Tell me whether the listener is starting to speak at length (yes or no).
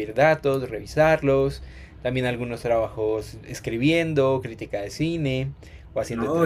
no